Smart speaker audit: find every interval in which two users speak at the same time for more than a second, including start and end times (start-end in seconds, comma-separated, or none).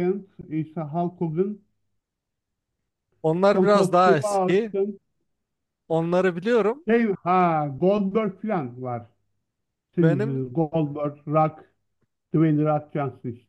3.5-4.7